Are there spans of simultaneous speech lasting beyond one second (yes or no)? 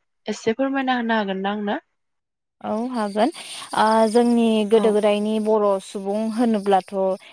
no